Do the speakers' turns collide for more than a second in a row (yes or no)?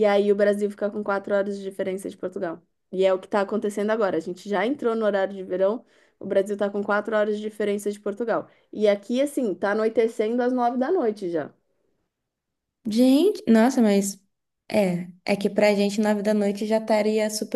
no